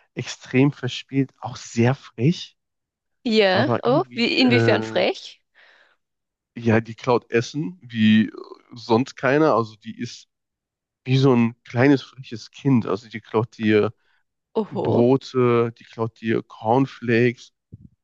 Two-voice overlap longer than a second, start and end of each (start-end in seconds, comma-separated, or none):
3.5-5.0